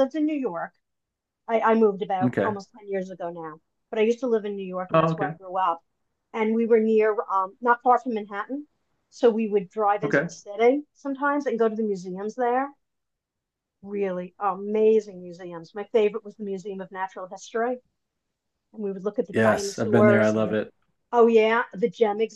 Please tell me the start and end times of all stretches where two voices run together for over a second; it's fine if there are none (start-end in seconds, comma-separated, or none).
19.3-20.6